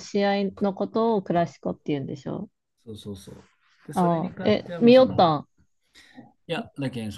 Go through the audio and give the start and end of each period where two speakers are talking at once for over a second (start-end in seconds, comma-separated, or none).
3.9-5.3